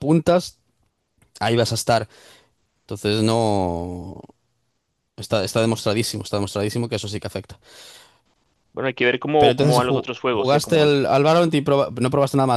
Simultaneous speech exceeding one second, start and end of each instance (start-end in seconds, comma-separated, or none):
9.4-10.9